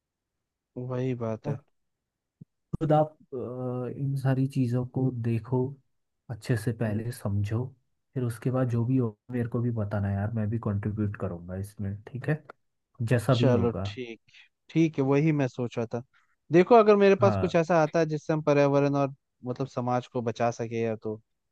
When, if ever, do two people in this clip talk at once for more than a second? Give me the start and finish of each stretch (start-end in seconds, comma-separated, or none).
none